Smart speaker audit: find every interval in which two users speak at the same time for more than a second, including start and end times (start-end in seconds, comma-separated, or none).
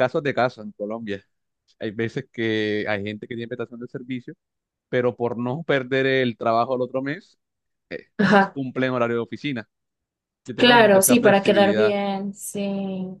10.5-12.0